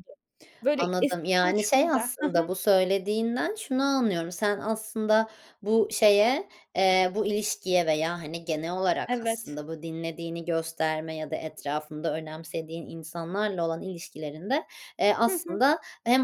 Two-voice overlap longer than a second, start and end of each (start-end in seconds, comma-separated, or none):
0.8-2.5